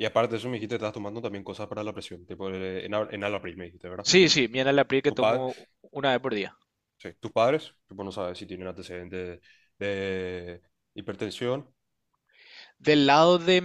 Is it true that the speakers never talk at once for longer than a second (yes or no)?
yes